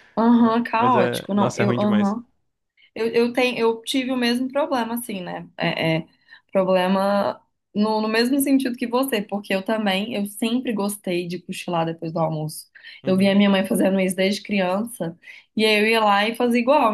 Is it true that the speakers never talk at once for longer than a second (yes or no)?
no